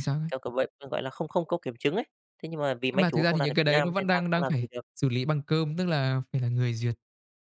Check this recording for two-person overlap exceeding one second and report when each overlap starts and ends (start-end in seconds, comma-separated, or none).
2.9-4.8